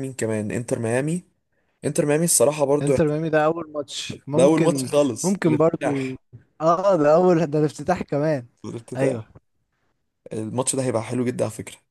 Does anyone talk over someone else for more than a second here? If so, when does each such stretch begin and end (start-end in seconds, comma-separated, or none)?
4.3-6.2